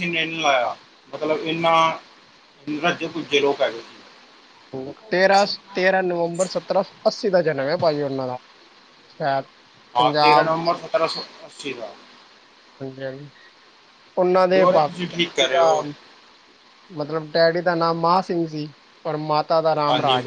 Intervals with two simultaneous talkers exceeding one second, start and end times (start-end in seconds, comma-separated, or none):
14.3-15.6